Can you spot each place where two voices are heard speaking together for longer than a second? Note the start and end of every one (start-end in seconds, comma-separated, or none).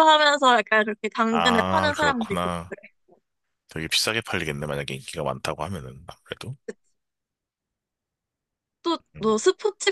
1.3-2.7